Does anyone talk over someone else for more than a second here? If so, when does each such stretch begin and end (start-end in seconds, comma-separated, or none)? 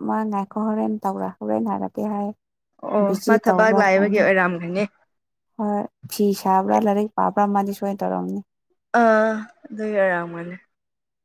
2.8-4.3